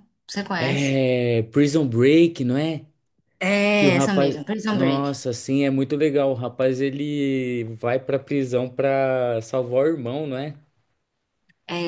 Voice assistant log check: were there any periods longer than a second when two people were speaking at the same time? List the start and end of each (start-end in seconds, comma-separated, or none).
3.8-5.2